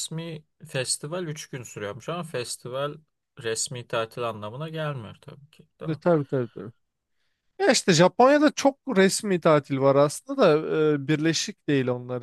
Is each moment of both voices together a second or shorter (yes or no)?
yes